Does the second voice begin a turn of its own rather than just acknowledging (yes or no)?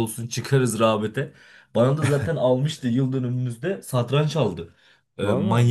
no